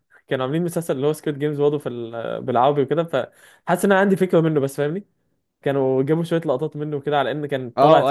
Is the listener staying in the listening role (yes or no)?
no